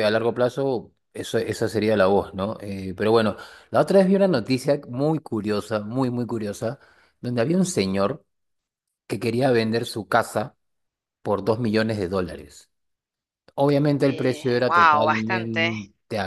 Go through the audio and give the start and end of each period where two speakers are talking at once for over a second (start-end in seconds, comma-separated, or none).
14.0-15.7